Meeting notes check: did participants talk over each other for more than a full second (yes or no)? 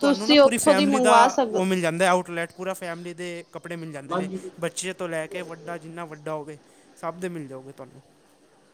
no